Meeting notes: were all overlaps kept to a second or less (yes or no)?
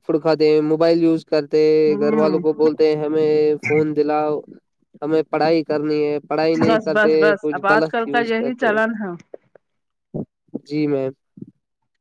no